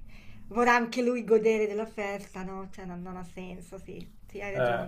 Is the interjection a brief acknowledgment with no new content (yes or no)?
no